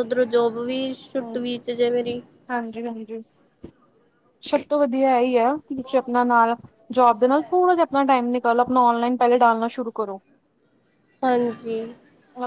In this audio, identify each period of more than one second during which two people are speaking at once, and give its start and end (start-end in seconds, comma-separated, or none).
none